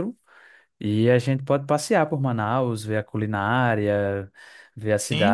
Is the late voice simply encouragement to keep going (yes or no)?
no